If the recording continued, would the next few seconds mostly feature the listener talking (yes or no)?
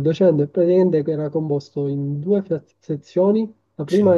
no